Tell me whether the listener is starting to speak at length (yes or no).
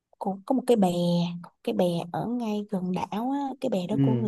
no